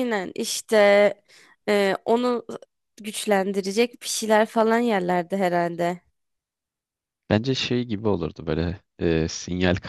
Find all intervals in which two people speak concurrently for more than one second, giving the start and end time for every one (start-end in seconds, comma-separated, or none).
none